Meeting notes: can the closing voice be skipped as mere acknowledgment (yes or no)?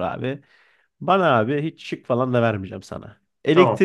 yes